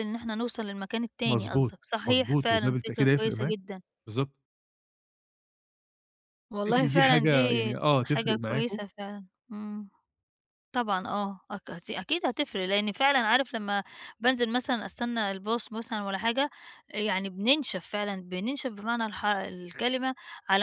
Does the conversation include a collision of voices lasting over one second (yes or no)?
yes